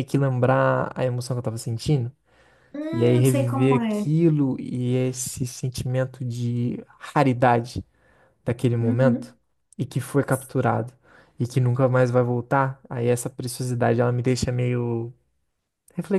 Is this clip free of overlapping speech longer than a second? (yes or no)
no